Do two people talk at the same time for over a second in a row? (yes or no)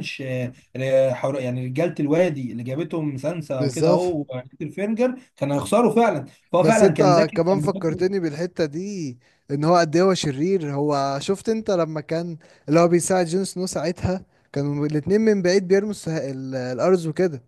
yes